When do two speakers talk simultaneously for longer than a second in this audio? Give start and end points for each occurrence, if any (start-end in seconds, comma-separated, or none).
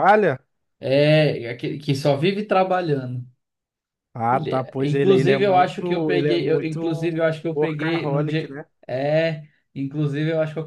4.3-8.7